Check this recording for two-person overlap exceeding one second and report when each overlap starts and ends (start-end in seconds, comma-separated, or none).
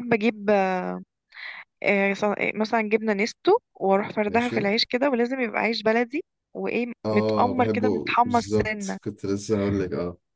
7.1-9.0